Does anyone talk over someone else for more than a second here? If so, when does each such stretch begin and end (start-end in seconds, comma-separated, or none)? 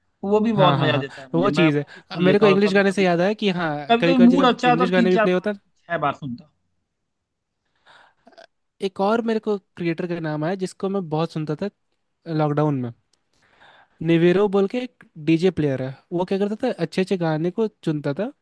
0.6-3.0, 3.9-5.5